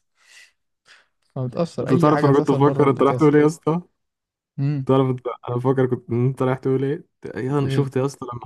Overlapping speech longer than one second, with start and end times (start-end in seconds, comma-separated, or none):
1.8-3.4